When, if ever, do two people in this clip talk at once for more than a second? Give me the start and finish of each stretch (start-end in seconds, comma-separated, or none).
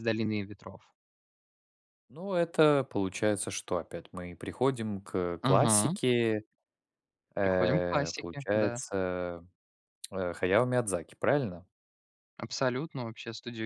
7.4-8.8